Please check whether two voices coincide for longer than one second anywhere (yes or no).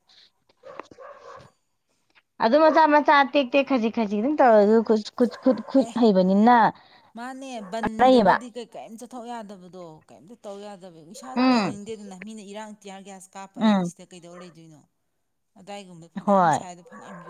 no